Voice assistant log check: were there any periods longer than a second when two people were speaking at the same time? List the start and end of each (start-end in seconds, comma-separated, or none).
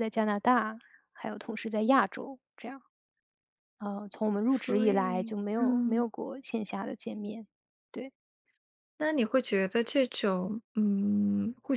4.5-6.1